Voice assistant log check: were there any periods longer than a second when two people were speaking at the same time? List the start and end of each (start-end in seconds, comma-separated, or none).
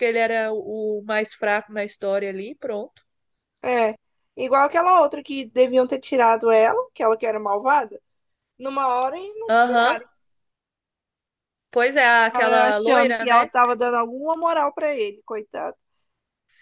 12.3-13.5